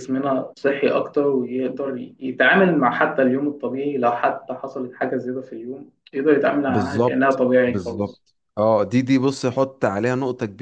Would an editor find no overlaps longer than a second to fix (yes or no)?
no